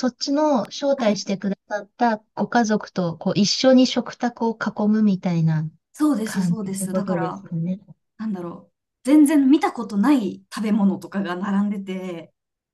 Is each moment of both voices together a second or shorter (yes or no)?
no